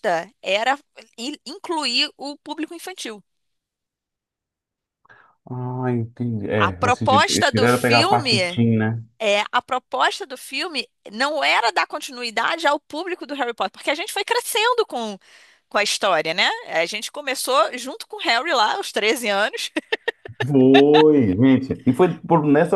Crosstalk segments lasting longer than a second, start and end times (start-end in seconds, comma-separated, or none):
6.6-8.6